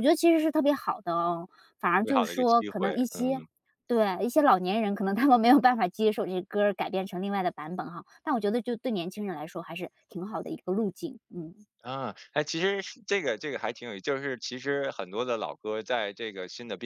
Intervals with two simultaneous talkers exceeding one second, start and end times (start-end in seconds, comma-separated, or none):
2.0-3.4